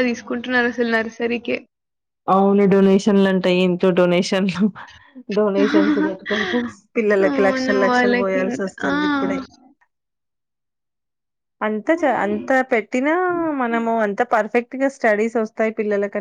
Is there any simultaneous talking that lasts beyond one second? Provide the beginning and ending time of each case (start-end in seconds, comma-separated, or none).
7.3-8.9